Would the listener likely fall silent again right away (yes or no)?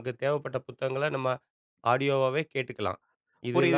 no